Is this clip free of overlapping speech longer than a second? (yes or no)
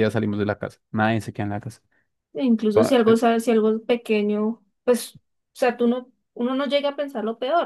yes